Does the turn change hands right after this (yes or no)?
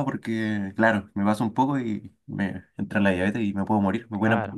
yes